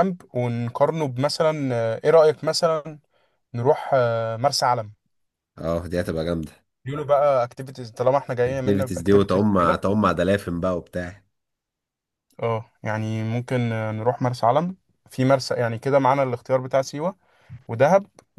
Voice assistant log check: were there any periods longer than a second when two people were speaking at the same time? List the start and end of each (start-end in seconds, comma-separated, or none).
8.5-9.8